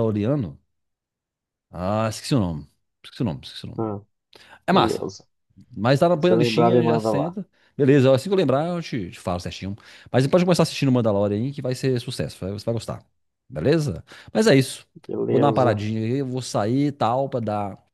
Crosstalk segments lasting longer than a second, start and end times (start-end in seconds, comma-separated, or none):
6.2-7.4